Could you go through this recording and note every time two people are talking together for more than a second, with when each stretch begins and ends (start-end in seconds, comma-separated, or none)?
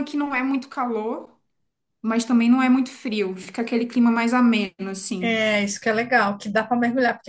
none